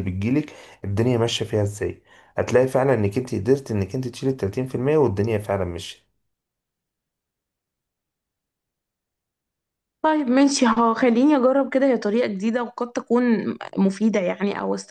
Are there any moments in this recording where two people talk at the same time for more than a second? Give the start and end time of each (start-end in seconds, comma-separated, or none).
none